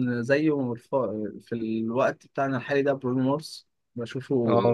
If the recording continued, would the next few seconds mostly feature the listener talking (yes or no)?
no